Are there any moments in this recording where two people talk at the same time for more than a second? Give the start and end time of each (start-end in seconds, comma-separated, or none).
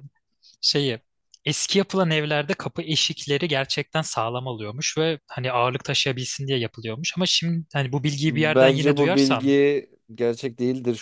8.2-9.6